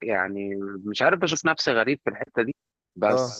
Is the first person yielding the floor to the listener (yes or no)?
no